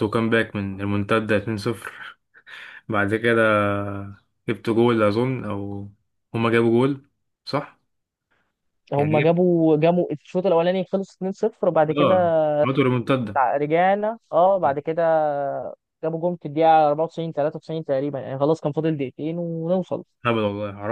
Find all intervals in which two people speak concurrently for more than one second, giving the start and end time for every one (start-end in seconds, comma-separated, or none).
none